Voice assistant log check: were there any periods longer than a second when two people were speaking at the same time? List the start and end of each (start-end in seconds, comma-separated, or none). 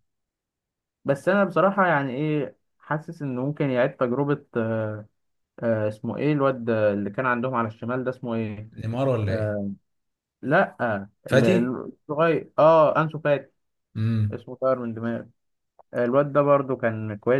none